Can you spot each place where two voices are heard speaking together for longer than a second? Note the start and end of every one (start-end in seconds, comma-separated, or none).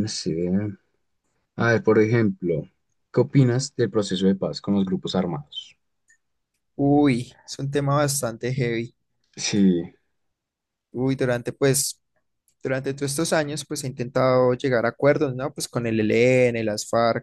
none